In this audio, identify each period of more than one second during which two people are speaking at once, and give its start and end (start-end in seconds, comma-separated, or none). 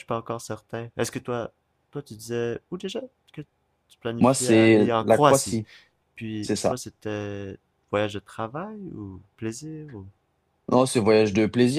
4.2-5.6